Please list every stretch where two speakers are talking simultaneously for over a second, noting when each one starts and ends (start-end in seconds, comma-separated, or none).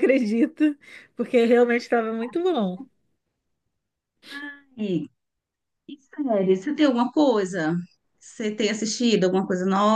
none